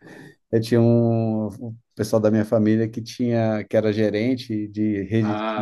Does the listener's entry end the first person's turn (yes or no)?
no